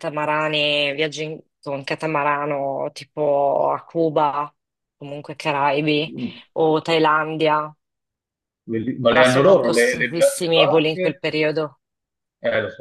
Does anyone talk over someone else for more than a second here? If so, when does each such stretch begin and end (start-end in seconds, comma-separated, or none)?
9.1-11.2